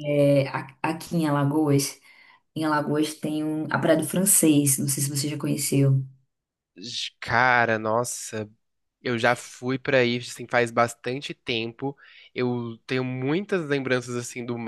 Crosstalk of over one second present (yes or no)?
no